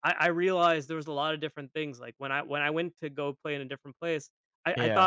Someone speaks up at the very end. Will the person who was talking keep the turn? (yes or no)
yes